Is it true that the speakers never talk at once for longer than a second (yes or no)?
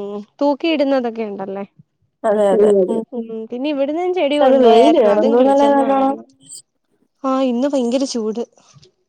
no